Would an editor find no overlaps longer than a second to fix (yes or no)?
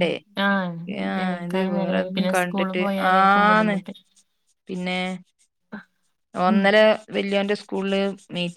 no